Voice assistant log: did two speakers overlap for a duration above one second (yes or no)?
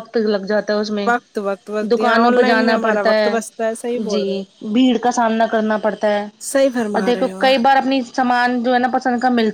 yes